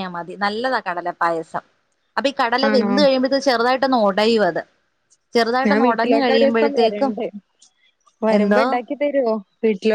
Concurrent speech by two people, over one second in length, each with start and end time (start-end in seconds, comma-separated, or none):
5.7-7.1